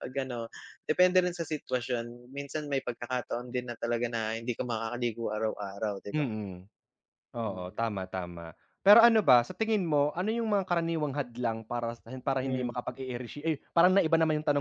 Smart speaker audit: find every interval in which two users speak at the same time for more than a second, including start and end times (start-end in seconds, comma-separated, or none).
none